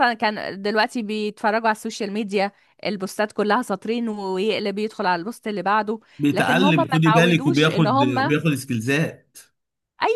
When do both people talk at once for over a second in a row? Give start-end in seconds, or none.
6.2-8.3